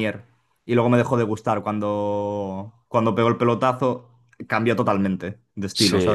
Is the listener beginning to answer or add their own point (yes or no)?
yes